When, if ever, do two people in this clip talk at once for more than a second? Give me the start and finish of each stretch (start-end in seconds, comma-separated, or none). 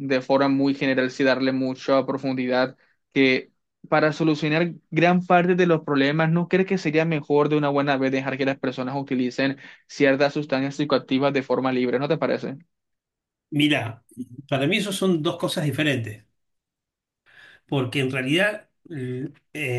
none